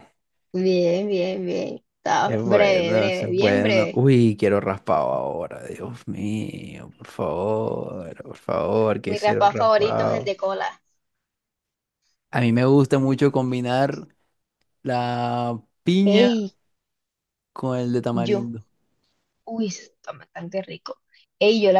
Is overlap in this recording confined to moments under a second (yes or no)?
no